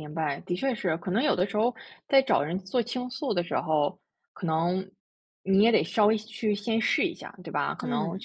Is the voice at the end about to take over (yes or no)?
no